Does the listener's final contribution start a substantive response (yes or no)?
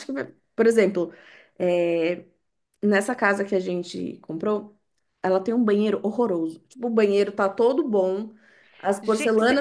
no